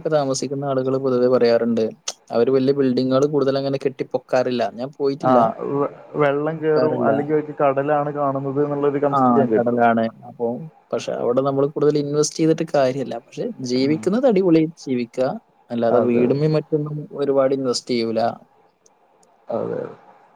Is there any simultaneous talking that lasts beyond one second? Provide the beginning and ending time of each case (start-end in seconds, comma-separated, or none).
none